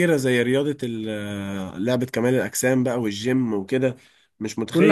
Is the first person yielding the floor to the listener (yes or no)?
no